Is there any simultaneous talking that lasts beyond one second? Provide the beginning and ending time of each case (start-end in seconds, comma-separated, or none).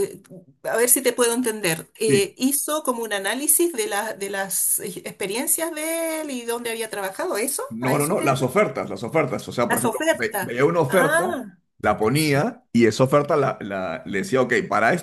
9.7-11.2